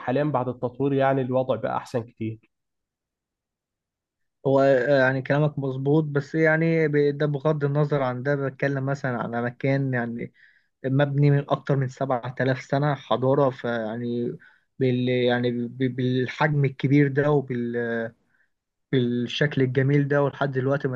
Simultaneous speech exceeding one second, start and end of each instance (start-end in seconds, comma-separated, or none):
none